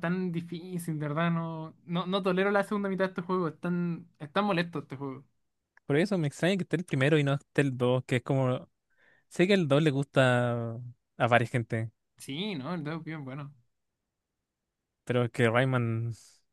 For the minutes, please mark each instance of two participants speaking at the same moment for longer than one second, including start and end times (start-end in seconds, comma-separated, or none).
none